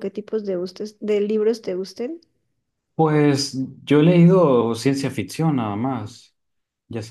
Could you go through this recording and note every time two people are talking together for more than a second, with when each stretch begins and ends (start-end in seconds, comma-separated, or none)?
none